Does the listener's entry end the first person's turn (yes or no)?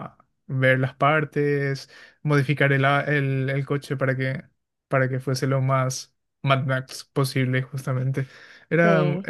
no